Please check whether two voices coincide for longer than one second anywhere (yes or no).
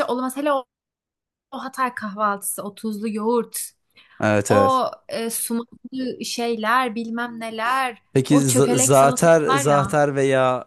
yes